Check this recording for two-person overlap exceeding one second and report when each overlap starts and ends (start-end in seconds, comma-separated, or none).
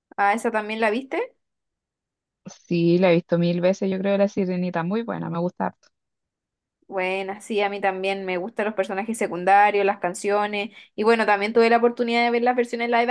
none